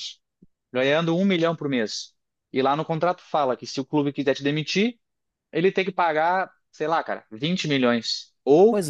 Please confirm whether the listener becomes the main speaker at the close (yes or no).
no